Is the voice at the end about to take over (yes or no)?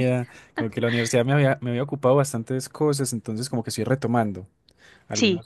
no